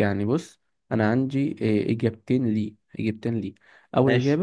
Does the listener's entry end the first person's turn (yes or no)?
no